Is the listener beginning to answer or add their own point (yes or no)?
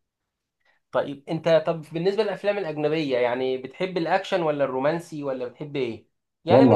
yes